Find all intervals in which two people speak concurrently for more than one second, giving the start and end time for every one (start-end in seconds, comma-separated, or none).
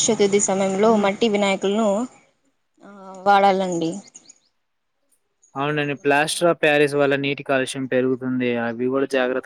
none